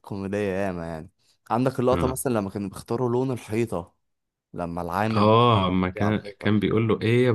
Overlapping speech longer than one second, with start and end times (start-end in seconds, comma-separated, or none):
none